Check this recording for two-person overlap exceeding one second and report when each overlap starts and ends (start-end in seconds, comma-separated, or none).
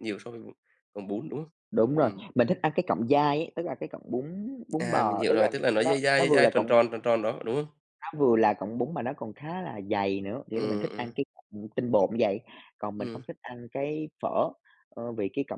4.8-6.8